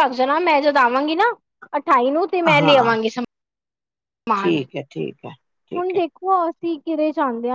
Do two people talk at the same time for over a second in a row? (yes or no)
no